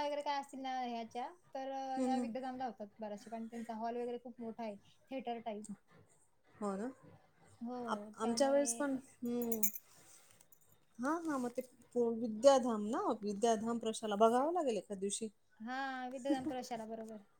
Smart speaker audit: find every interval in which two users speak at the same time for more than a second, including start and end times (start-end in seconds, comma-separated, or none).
none